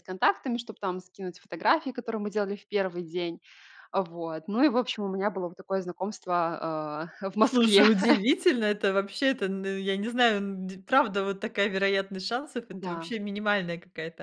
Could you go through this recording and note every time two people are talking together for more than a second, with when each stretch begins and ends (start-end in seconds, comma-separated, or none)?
none